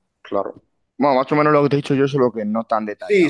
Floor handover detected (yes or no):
yes